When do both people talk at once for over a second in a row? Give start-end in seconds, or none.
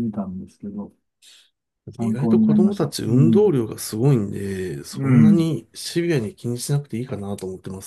2.0-3.5